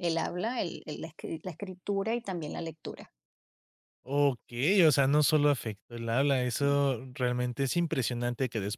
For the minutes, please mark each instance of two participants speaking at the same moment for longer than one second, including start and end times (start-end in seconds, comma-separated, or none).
none